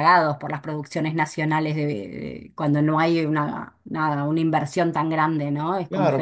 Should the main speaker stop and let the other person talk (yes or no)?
yes